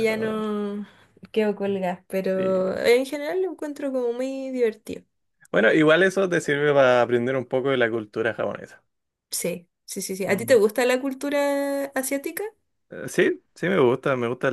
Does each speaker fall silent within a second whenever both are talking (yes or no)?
yes